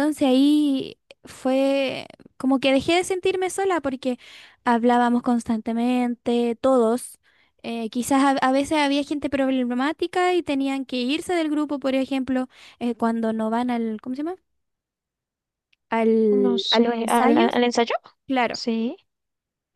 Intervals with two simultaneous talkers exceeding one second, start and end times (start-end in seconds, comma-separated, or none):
16.3-17.6